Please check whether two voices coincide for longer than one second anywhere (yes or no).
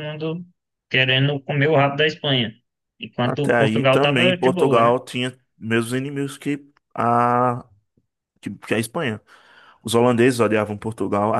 yes